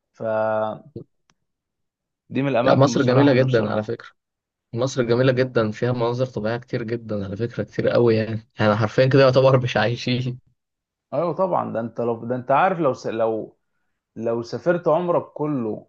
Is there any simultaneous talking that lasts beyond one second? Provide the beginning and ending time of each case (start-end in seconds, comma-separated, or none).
2.6-4.0